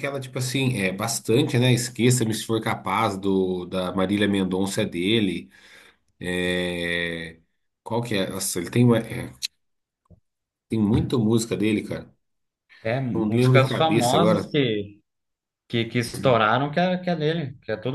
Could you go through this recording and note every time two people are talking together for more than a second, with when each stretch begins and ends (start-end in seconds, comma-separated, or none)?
13.1-14.5